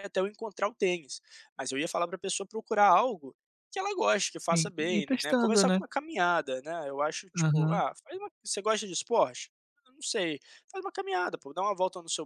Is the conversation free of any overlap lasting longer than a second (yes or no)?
no